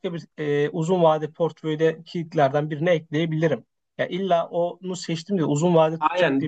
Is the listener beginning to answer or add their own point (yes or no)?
yes